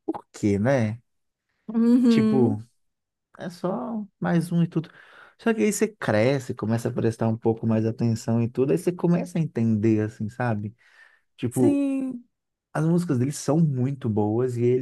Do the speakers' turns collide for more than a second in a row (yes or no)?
no